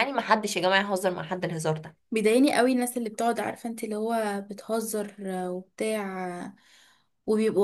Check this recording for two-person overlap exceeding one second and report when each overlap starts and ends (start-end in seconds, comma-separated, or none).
none